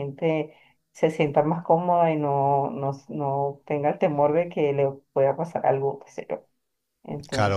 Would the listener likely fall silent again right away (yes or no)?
no